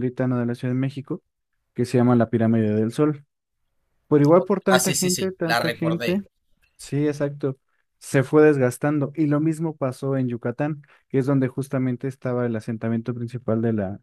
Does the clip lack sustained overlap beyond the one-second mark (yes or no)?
no